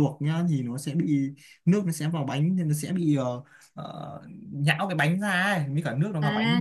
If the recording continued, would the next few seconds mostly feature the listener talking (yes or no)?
yes